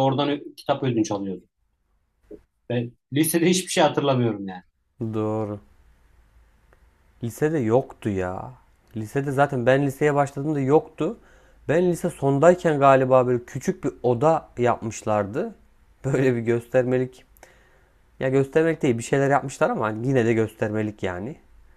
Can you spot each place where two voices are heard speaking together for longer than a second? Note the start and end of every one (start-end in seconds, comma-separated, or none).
none